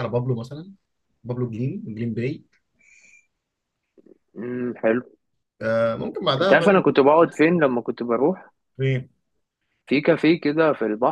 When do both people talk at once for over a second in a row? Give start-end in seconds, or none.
none